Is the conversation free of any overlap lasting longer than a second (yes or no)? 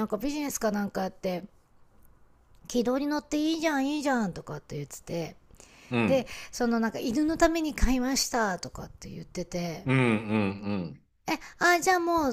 yes